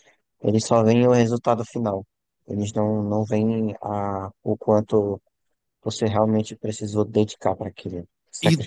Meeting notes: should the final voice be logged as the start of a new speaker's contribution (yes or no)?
yes